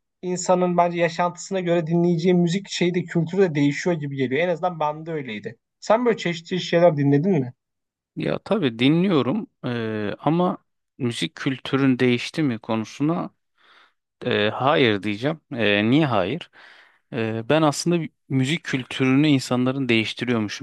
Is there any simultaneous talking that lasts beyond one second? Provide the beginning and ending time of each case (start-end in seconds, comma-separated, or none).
none